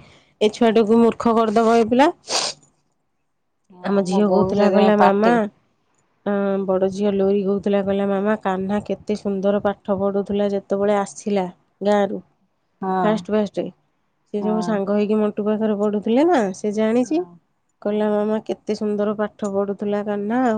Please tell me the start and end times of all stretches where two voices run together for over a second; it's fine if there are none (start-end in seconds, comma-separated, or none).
3.9-5.3